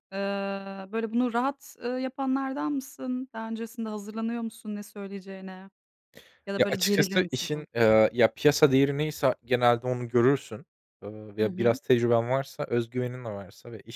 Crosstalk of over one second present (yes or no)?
yes